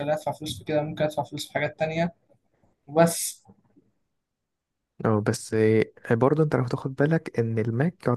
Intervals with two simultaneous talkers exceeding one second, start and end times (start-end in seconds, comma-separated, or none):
none